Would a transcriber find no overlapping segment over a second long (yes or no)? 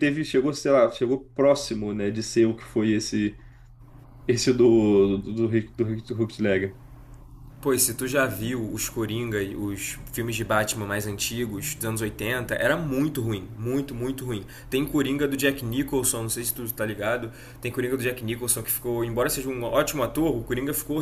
yes